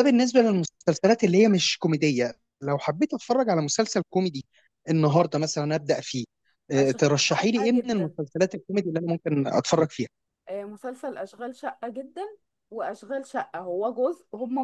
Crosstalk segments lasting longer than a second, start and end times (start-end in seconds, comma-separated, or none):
6.8-8.2